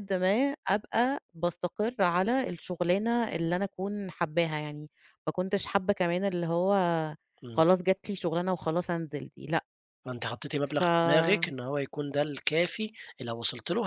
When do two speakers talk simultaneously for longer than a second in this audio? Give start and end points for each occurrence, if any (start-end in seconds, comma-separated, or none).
none